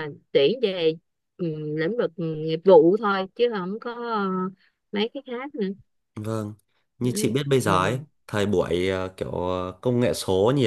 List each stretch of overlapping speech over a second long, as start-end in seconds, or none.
none